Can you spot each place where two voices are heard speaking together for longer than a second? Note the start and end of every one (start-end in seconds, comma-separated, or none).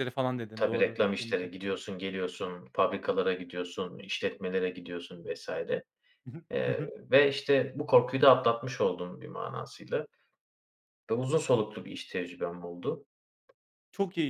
0.6-1.8